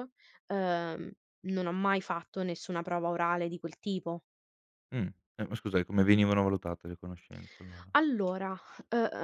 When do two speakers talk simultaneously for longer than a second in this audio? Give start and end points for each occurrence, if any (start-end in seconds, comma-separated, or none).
none